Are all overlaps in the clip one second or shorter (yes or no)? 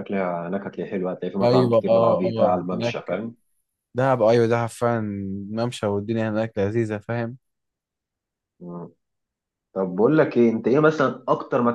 no